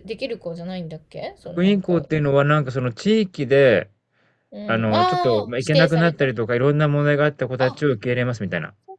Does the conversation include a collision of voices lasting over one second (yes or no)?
yes